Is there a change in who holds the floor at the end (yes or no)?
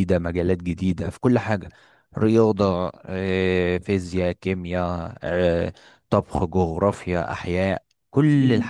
yes